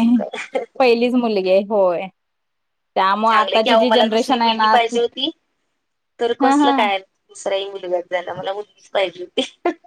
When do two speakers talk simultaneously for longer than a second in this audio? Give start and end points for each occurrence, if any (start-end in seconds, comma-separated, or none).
3.3-5.0